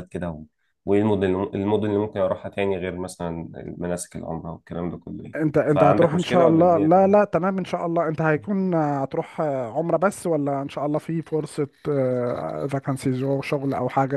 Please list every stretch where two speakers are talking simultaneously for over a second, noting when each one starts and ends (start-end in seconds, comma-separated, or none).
5.4-7.2